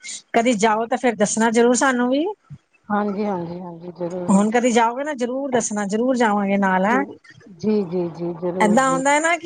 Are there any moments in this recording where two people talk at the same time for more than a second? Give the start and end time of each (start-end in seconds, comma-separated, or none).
none